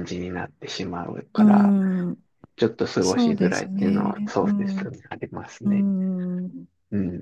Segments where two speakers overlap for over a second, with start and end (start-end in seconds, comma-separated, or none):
3.0-4.9